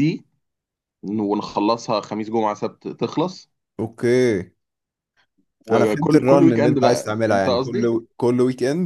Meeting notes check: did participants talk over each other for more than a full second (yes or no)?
yes